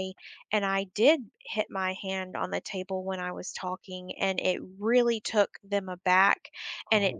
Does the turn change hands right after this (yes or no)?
no